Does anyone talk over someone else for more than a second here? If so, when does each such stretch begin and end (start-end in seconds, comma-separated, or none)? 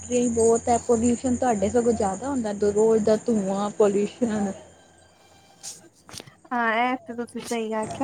none